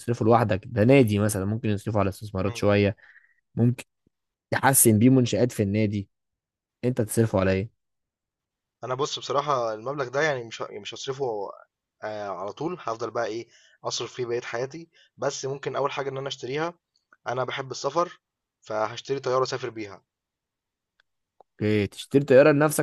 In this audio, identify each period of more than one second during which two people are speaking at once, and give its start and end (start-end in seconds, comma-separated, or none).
none